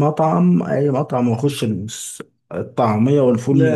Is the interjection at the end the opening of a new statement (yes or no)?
no